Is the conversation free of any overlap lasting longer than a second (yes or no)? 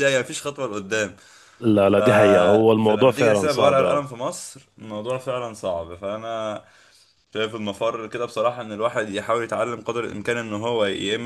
no